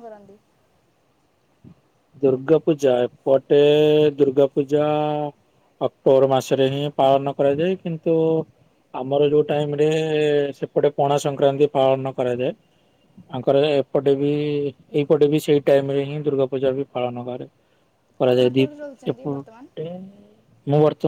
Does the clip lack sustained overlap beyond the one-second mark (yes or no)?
no